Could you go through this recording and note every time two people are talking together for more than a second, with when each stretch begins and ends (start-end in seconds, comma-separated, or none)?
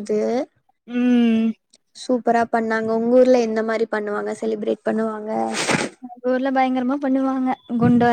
none